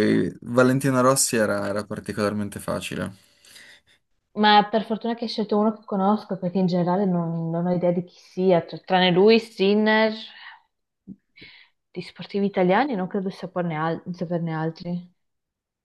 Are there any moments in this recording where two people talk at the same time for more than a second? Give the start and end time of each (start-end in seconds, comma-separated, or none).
none